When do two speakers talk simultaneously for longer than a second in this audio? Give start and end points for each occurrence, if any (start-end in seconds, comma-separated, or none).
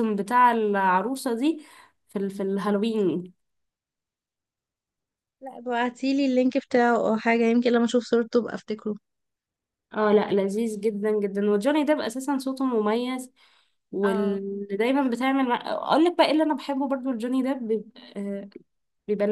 none